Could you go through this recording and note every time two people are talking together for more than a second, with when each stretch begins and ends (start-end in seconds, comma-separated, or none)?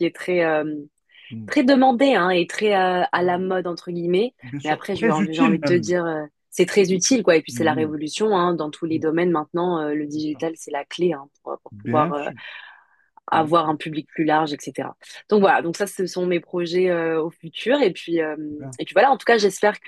4.4-5.9